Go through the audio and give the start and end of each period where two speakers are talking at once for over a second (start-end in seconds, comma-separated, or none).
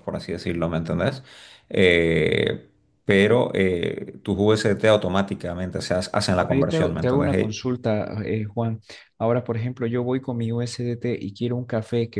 6.4-7.6